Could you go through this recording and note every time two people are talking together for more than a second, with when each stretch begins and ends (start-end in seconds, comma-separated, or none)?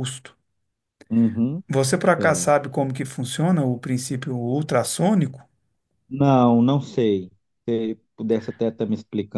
none